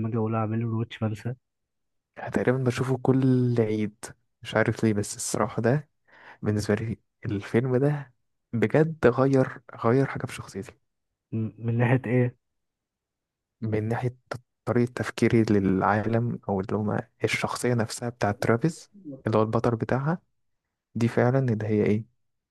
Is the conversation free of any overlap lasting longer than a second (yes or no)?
yes